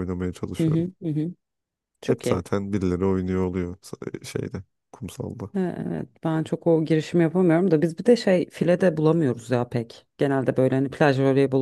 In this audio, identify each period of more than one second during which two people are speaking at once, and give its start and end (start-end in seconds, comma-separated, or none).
none